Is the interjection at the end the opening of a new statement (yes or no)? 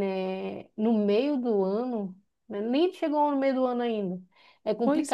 no